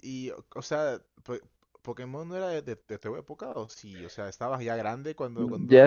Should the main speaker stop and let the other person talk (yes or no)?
yes